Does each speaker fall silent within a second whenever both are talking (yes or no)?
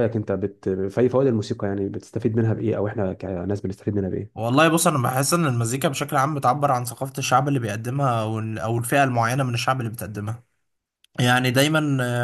yes